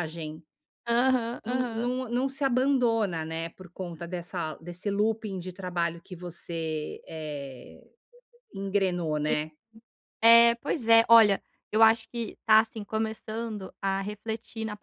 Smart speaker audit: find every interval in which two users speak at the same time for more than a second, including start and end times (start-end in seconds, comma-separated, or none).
none